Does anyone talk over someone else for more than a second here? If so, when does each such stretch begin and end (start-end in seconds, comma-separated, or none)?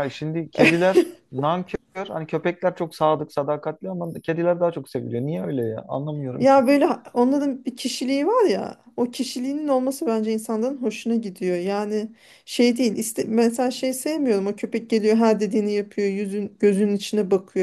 none